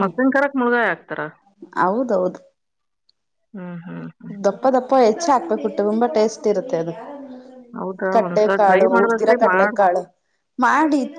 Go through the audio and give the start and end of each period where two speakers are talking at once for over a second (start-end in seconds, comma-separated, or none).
8.2-9.8